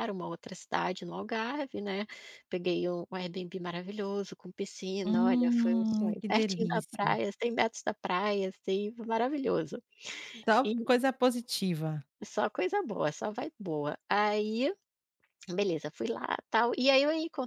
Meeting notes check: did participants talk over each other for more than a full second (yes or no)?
yes